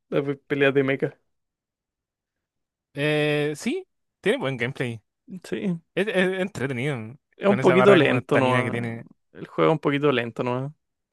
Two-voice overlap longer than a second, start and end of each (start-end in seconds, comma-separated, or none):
7.4-8.8